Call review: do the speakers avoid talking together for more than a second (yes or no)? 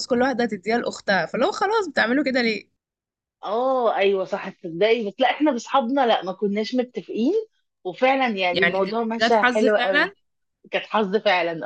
no